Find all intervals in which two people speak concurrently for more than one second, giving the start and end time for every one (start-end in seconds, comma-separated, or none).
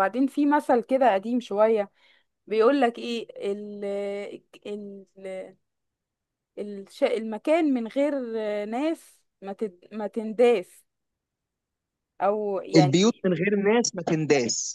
none